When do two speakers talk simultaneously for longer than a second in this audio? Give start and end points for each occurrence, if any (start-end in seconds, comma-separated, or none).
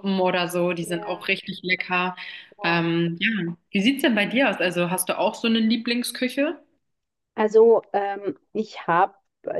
none